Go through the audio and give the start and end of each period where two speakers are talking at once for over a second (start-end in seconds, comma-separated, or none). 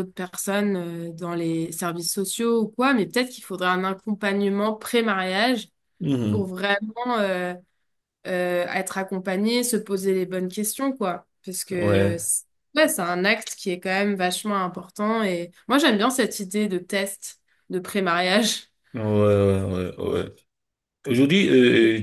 none